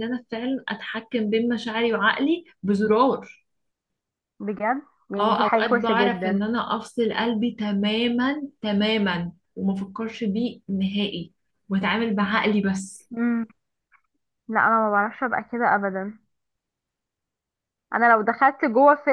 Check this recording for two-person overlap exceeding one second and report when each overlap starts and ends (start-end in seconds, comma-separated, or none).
5.2-6.4